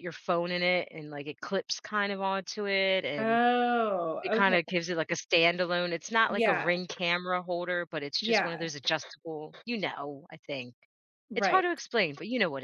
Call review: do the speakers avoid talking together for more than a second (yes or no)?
yes